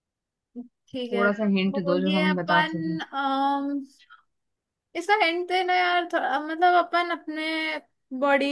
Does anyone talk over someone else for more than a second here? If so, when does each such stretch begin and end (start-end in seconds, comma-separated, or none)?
1.1-3.0